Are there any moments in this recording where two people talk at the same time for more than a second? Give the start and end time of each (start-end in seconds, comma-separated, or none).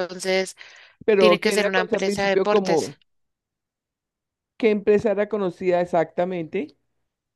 1.2-2.9